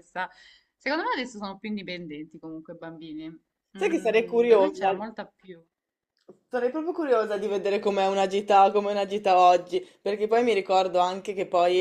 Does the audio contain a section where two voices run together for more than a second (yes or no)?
yes